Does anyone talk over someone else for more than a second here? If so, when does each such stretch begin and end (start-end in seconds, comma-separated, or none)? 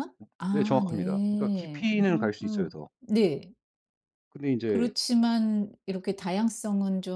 0.5-2.9